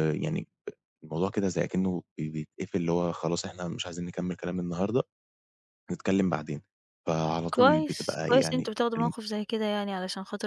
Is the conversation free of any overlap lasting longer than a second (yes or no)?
no